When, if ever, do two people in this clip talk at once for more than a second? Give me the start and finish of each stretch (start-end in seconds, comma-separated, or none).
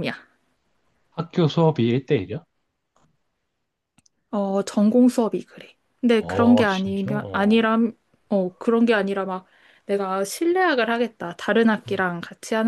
6.1-7.7